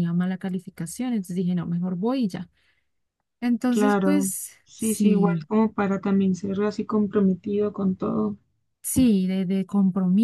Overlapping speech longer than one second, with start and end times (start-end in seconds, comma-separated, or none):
3.7-5.4